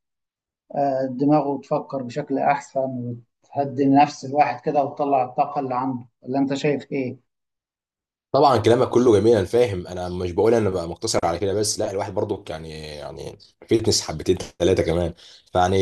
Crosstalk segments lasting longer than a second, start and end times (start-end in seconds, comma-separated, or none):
none